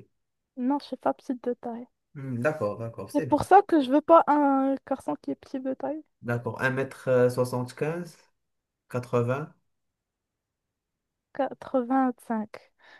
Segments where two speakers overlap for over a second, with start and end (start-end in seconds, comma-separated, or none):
none